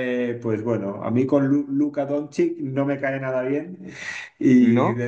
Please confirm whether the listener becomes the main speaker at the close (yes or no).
no